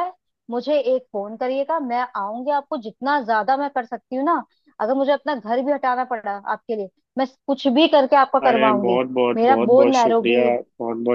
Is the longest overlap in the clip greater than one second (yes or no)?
yes